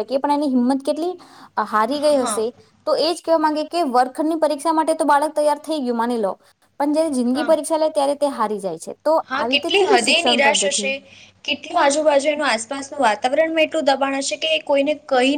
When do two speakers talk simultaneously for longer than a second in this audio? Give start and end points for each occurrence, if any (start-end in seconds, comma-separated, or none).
9.3-10.9